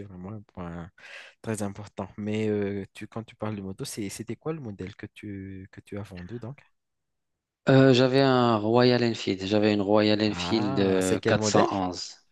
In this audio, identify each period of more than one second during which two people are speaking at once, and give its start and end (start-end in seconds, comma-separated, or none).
10.3-11.7